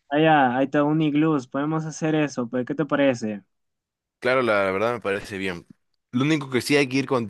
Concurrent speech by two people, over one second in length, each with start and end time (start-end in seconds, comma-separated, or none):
none